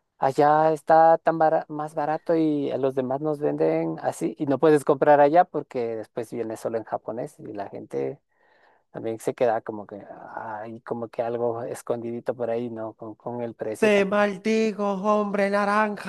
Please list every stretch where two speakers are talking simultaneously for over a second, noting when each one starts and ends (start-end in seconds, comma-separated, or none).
none